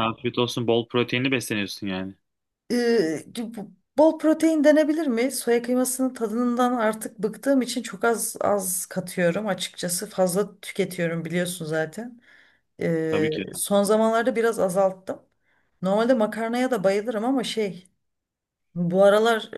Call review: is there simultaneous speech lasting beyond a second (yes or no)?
no